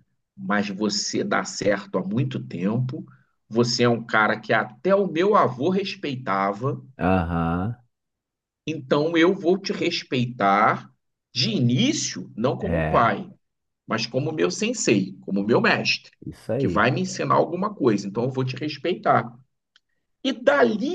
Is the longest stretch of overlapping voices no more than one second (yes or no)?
yes